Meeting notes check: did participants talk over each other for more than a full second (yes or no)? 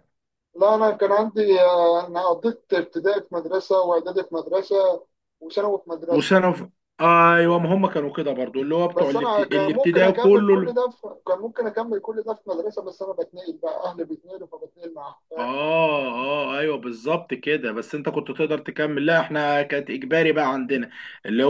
yes